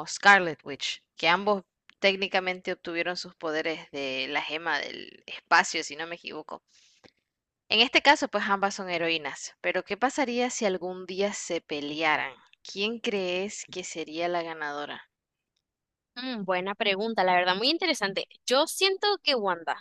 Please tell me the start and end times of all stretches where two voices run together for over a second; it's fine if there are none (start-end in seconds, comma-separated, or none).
none